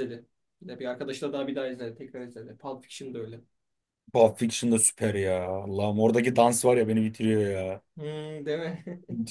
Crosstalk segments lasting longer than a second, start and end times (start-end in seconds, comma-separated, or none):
none